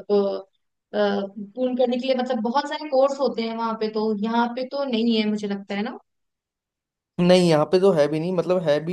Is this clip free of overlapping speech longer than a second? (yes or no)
yes